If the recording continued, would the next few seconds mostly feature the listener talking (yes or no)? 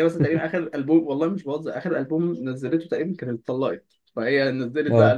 no